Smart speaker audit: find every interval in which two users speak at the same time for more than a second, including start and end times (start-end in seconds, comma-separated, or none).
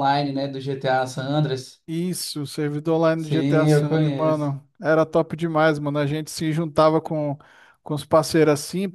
3.2-4.5